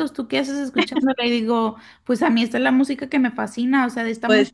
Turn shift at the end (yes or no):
no